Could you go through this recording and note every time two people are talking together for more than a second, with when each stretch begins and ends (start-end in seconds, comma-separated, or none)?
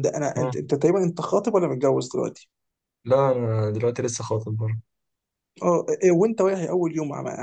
none